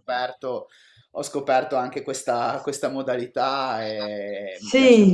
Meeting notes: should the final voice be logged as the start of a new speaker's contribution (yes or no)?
yes